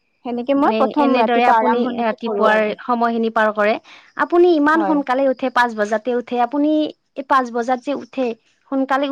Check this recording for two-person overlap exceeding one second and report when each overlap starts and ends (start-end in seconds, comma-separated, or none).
0.7-2.7